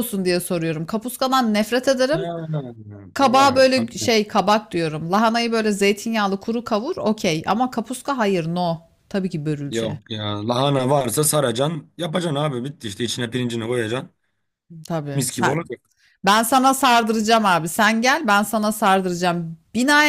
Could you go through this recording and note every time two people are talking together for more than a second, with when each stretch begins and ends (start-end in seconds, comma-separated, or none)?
none